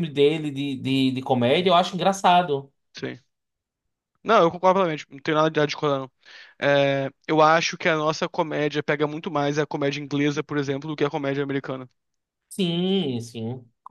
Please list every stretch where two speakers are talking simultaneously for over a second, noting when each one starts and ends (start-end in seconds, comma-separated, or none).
none